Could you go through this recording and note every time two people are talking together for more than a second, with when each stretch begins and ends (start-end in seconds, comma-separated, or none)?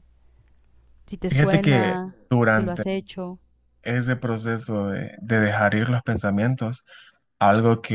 1.3-2.8